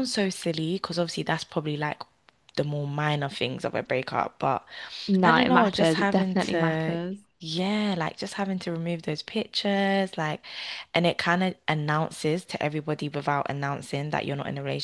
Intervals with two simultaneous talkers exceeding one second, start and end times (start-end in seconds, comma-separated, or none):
5.2-7.0